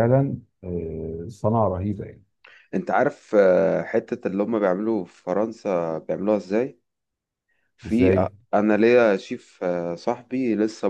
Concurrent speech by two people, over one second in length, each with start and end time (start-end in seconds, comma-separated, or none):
none